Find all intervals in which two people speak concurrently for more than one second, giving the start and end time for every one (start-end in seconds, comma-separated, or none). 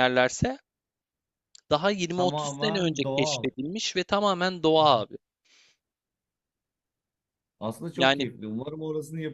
2.2-3.5